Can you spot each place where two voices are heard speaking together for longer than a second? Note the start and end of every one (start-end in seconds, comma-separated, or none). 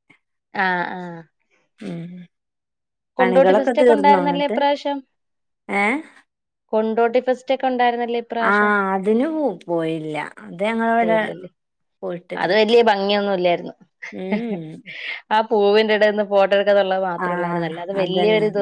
3.2-4.6